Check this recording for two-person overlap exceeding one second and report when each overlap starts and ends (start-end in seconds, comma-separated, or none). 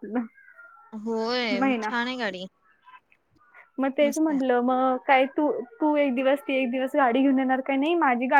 none